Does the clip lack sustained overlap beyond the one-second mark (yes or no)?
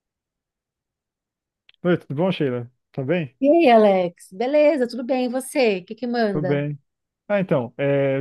yes